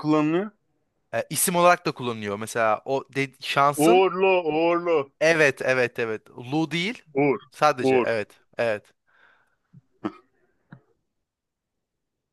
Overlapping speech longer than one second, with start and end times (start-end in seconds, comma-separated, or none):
none